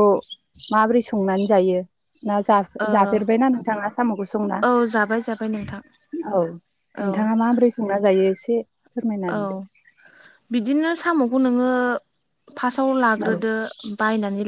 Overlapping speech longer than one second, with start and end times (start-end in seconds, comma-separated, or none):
none